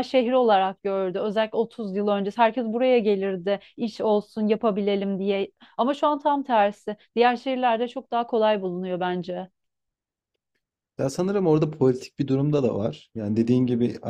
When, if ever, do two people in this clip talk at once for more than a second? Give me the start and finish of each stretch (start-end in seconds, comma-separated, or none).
none